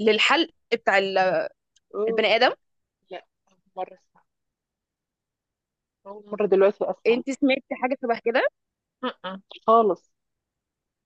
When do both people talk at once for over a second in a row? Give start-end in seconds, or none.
none